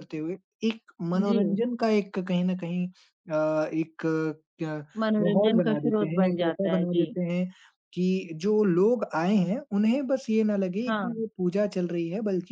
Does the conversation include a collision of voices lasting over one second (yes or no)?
yes